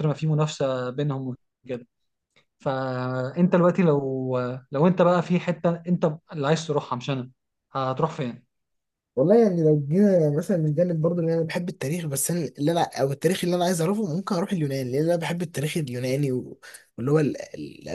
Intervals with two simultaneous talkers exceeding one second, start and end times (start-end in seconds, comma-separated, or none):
none